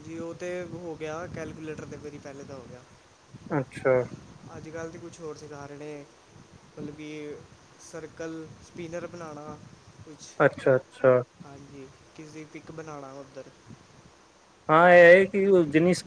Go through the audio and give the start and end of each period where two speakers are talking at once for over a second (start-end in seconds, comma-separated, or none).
none